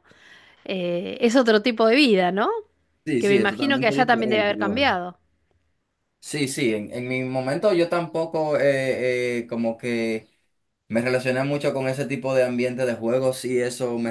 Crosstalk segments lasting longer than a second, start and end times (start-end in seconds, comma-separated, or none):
3.2-4.8